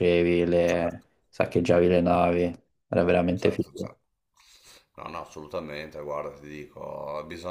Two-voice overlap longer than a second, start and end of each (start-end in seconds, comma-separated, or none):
none